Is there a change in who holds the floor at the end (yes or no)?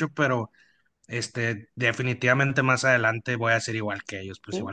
yes